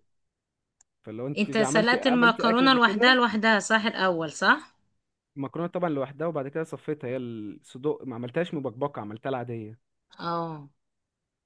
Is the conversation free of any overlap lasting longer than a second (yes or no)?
no